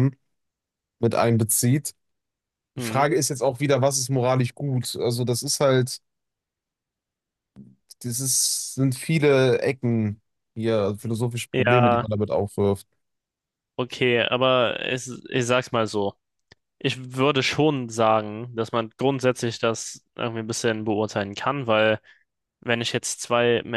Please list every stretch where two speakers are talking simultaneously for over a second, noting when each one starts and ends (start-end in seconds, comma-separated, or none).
none